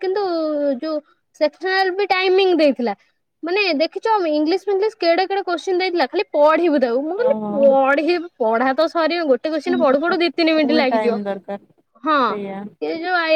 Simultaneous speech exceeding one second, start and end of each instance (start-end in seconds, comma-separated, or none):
9.7-11.2